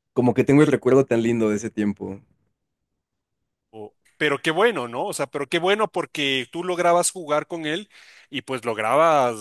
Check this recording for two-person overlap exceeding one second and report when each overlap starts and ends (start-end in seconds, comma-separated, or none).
none